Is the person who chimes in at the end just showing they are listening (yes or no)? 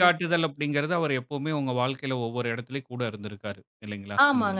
no